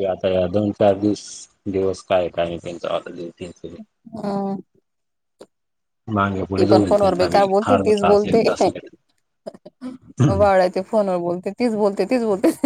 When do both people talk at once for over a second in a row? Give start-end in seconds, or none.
6.6-8.4